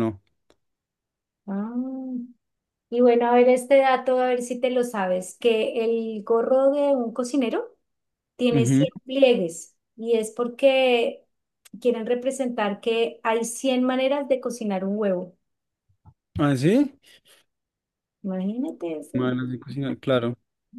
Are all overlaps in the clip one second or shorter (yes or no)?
yes